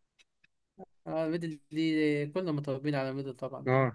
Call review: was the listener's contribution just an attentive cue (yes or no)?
no